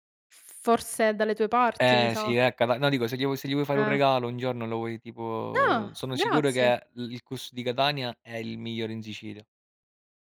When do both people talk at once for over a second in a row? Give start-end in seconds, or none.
5.5-6.8